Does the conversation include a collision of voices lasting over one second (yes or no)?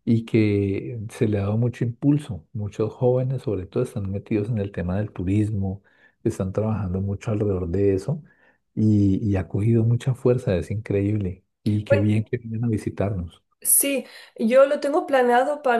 no